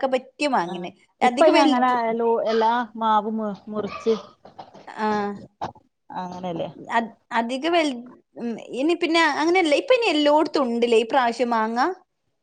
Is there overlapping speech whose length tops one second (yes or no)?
no